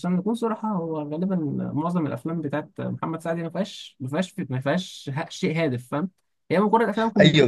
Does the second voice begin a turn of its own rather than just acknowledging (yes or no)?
yes